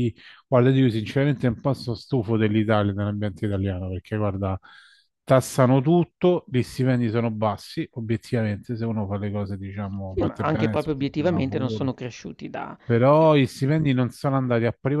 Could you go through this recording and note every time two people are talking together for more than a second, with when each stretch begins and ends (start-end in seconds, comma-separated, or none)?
10.1-11.9